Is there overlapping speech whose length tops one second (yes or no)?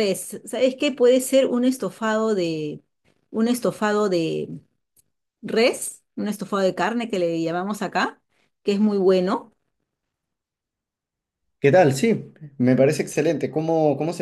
no